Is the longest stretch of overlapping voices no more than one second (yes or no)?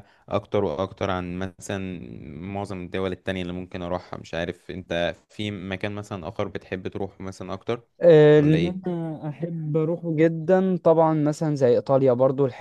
yes